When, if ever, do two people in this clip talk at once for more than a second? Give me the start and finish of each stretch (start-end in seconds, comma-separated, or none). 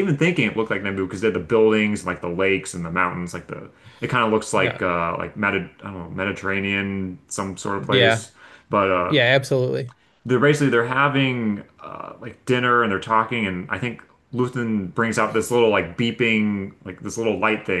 none